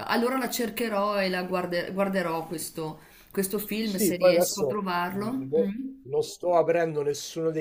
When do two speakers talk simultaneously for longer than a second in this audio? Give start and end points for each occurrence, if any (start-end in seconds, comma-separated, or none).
3.8-6.0